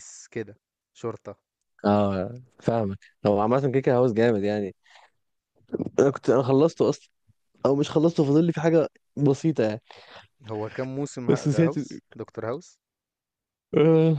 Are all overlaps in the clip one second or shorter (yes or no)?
yes